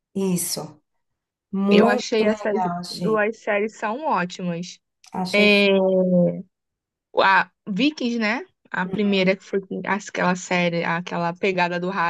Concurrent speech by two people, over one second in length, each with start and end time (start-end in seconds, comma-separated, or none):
1.7-3.2